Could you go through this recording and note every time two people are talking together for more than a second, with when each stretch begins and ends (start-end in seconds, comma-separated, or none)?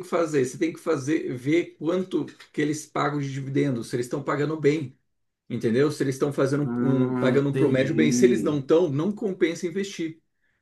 6.7-8.6